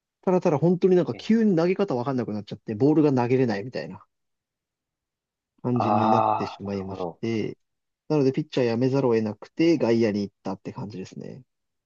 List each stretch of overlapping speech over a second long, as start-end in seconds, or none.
5.7-7.2